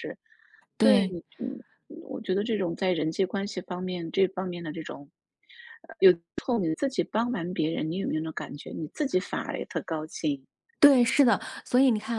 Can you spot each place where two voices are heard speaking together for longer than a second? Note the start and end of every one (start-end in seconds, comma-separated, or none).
none